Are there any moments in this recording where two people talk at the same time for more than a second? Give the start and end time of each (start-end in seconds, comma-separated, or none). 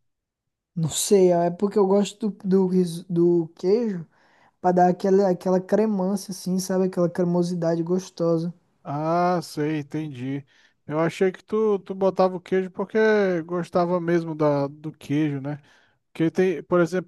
none